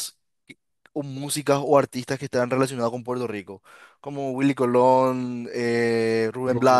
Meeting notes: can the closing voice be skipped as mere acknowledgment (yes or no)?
no